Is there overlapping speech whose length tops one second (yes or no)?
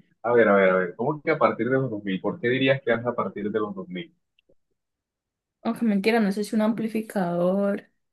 no